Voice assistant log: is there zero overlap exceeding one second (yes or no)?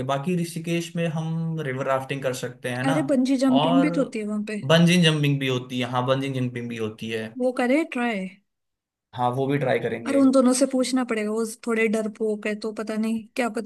yes